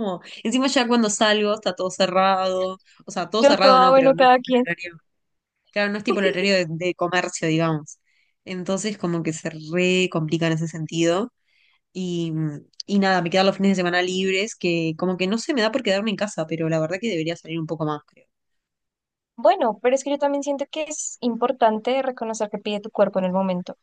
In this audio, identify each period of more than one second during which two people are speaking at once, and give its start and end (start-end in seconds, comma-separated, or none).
3.4-4.7